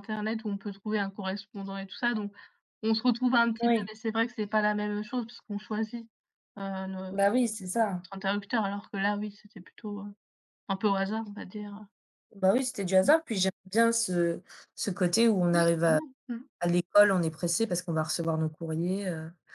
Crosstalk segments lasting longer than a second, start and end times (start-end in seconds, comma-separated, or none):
none